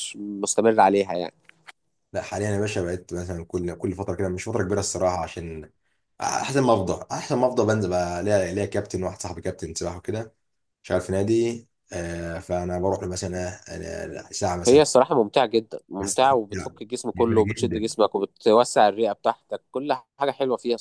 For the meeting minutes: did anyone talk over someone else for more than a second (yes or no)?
yes